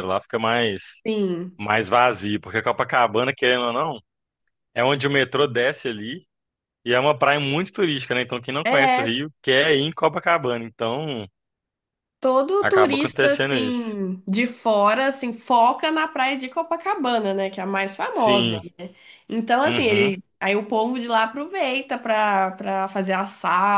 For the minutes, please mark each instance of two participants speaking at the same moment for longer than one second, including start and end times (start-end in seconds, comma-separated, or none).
12.6-14.0